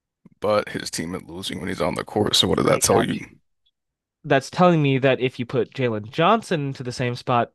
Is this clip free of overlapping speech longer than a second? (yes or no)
yes